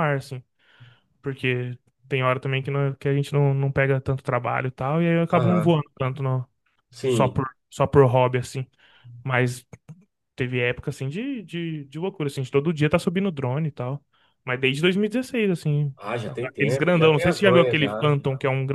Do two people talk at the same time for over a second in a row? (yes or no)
yes